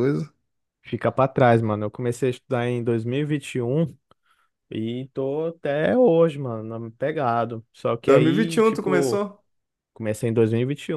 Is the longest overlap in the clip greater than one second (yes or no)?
yes